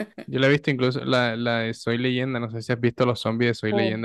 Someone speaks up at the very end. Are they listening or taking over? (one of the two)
taking over